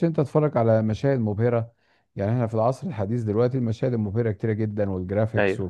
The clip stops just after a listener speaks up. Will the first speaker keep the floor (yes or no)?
yes